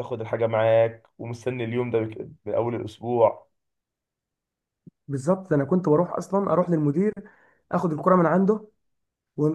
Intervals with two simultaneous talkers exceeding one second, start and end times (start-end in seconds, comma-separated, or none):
none